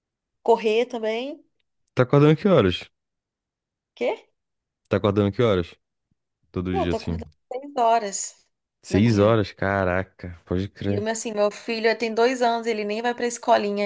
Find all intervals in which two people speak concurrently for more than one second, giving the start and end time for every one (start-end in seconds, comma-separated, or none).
none